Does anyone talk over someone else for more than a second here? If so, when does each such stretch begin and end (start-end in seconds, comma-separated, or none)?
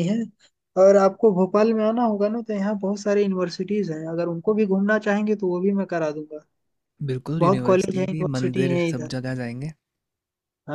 7.4-9.1